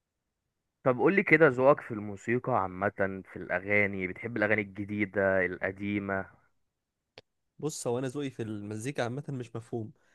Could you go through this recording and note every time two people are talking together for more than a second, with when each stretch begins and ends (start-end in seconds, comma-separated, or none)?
none